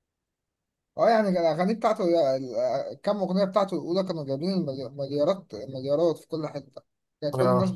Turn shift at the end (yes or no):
no